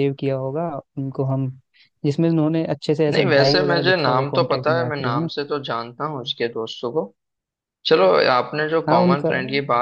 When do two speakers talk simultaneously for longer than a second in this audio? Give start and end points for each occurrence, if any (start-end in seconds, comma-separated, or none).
3.1-5.3